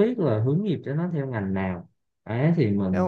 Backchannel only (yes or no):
no